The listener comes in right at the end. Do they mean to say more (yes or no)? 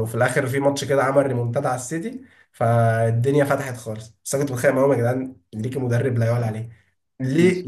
no